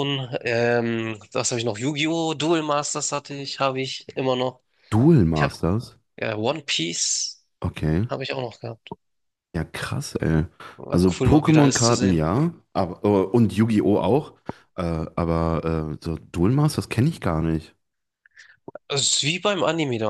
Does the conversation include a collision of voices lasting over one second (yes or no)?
yes